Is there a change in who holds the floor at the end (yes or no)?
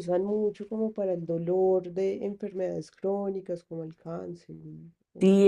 yes